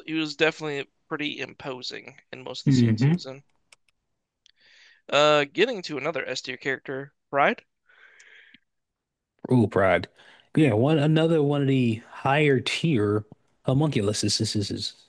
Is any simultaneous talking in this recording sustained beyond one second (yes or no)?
no